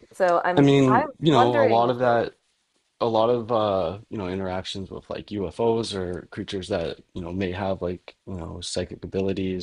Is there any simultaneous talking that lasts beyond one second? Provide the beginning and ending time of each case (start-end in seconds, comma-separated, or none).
0.6-2.2